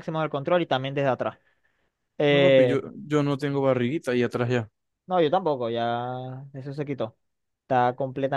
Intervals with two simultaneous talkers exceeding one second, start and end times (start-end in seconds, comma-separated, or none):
none